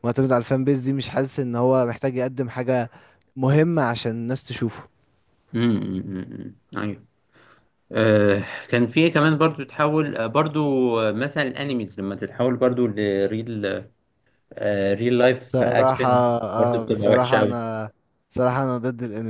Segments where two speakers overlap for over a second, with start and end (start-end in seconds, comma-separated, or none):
15.4-17.6